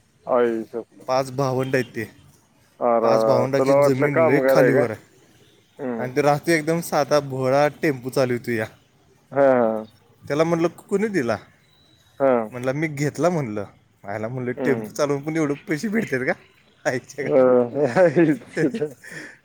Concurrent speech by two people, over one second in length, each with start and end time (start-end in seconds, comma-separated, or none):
3.0-4.8